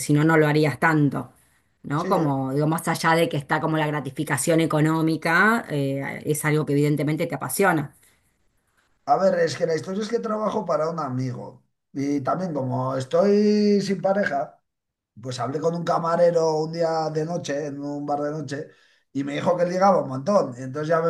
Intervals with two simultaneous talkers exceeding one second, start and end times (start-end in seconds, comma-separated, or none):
none